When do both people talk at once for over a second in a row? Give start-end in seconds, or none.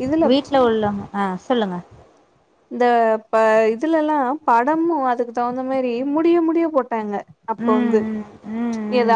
none